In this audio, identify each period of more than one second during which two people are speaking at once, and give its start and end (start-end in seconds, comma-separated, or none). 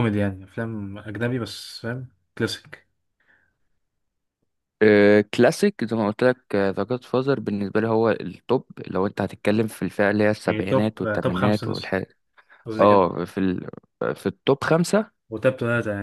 10.5-11.9